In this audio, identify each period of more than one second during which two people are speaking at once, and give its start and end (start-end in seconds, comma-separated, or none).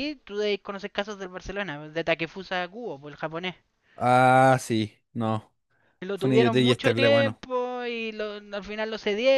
6.2-7.4